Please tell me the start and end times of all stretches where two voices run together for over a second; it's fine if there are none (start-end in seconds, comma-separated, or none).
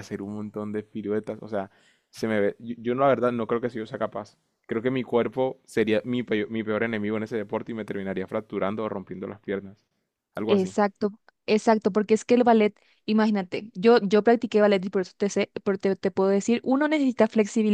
none